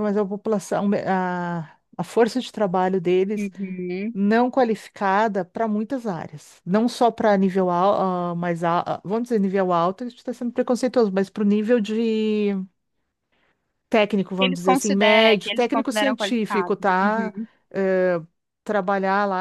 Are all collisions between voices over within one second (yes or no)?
no